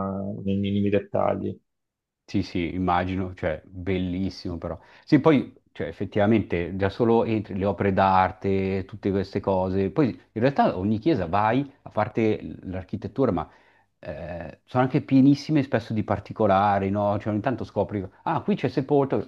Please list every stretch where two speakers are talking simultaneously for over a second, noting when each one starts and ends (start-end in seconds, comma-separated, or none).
none